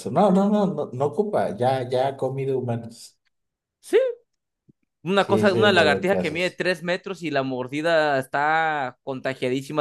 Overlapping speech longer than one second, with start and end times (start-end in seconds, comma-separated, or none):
5.2-6.6